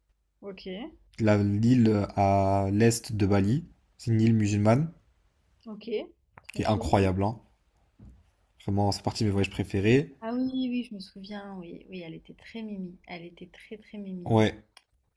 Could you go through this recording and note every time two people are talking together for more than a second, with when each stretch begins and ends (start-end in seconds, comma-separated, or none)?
none